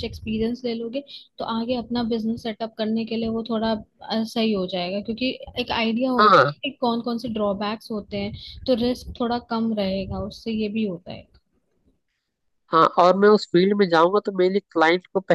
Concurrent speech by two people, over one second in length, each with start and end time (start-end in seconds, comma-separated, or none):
none